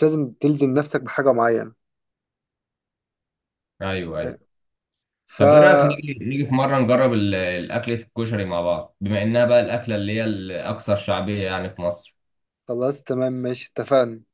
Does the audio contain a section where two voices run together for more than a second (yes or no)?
no